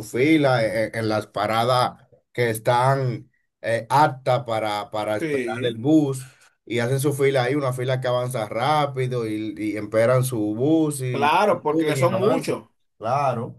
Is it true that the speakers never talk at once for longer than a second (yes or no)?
no